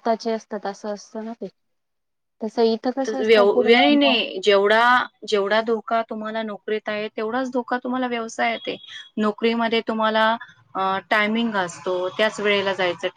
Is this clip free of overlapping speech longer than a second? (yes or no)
yes